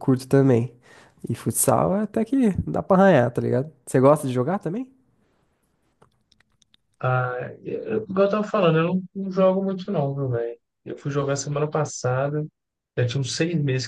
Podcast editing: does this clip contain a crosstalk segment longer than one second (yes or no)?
no